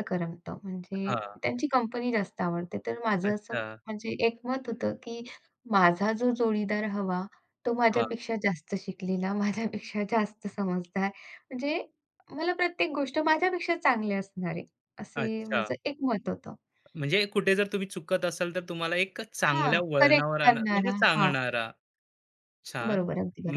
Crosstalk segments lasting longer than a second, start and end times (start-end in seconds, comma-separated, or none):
19.5-21.3